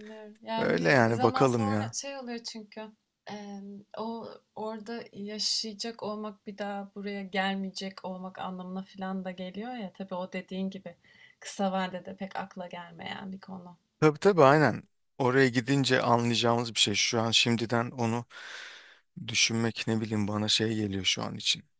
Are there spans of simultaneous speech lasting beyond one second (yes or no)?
yes